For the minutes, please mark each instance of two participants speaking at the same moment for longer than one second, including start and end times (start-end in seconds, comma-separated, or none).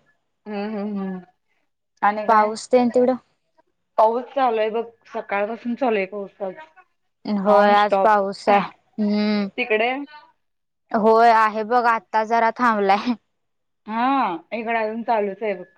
none